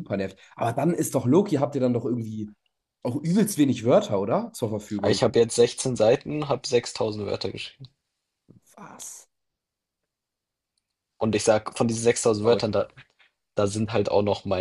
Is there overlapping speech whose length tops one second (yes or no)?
no